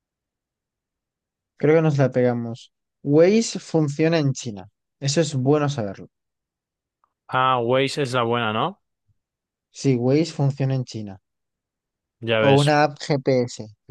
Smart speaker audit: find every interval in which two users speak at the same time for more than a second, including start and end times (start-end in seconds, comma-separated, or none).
none